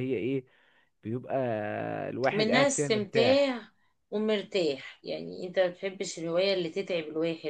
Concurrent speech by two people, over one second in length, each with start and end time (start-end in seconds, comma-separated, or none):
2.3-3.6